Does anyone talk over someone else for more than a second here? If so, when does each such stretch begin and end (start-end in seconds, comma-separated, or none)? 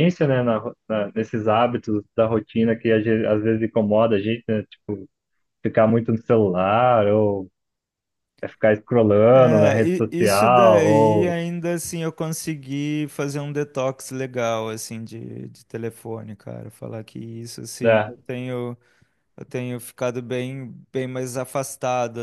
9.3-11.4